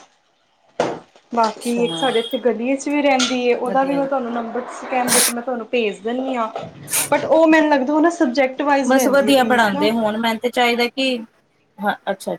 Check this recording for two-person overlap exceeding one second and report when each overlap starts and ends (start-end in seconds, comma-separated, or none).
none